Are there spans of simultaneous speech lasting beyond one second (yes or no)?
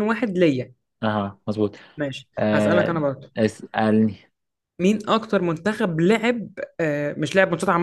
no